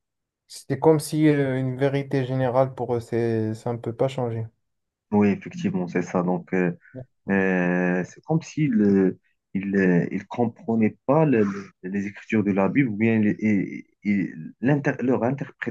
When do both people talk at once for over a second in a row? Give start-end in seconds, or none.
none